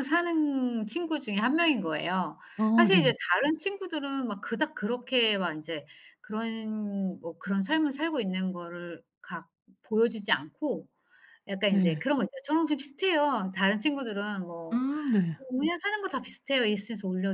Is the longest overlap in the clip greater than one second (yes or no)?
no